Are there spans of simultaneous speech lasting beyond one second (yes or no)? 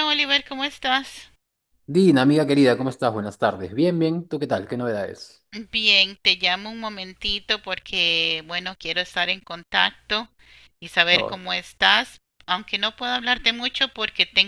no